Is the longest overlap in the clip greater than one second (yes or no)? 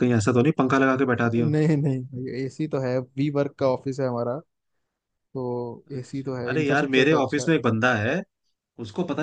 yes